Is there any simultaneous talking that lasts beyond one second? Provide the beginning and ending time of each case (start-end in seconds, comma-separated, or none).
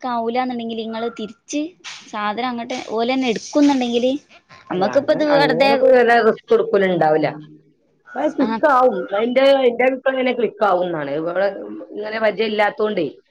none